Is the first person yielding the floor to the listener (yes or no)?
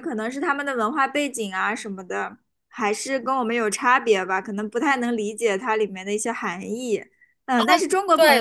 yes